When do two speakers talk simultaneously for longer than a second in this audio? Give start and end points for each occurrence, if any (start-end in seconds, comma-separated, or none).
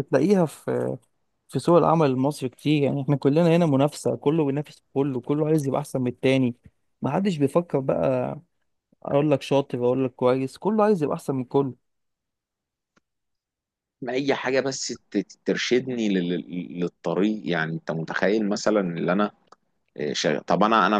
none